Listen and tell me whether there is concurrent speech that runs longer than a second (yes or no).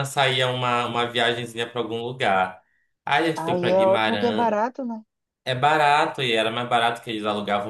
yes